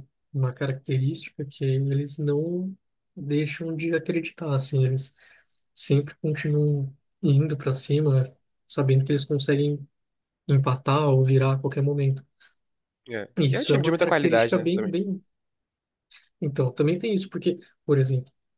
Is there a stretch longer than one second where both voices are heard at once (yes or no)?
yes